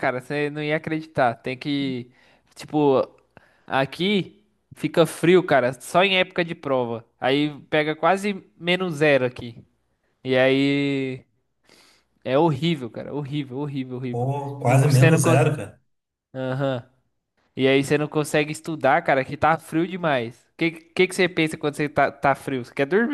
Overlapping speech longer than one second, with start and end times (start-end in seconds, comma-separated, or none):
14.1-15.5